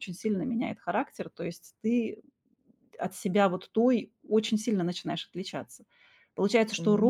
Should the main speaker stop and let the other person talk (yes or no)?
no